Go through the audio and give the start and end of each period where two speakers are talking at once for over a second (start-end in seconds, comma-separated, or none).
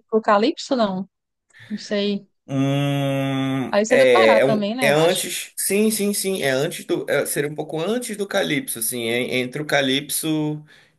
3.7-5.3